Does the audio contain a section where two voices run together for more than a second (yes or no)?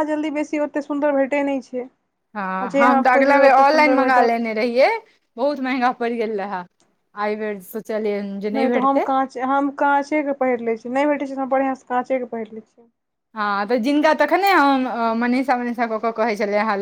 yes